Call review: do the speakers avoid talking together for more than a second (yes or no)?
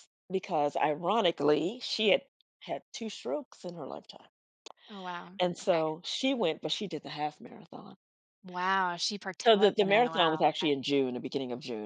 no